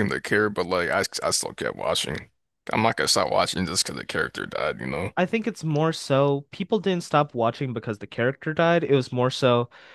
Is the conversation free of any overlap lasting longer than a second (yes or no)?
yes